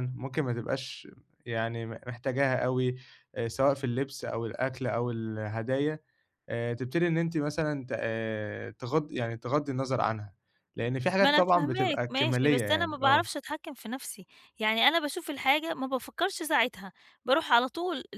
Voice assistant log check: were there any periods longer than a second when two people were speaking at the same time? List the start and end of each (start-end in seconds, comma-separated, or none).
11.2-13.3